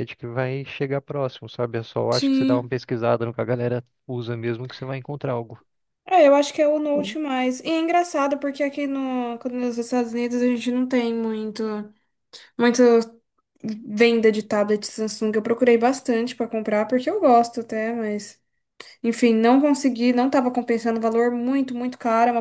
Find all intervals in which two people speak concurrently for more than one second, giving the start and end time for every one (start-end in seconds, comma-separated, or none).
none